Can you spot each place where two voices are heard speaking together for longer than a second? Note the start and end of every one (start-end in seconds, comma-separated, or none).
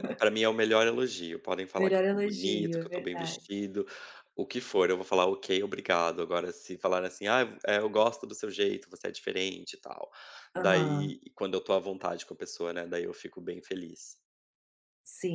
1.8-3.5